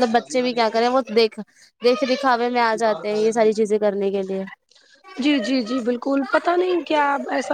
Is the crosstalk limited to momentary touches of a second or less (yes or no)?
yes